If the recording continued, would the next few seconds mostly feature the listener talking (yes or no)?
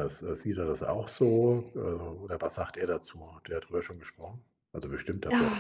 yes